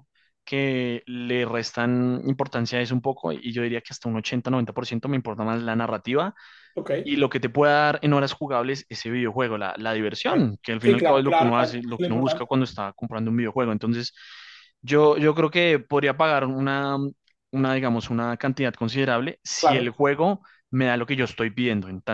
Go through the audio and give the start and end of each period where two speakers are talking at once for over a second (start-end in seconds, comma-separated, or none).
10.2-12.5